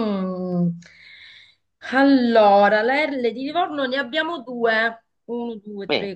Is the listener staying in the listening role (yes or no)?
yes